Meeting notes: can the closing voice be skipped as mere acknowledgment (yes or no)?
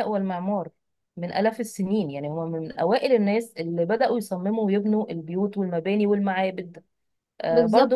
no